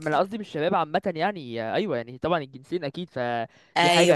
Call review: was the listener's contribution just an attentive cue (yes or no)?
yes